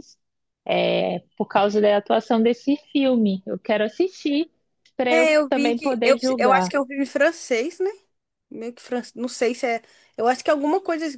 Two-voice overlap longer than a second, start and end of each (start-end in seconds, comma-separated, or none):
5.1-6.7